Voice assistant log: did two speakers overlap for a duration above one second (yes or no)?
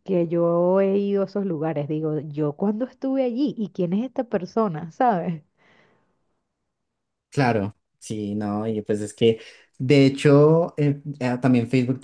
no